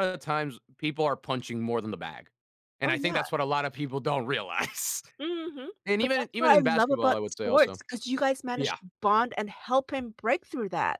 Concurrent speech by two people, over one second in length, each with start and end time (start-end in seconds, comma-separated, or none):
5.8-7.8